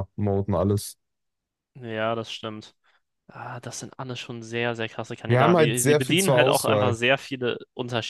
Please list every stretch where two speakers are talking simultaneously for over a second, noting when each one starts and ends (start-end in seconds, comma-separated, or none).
5.3-7.0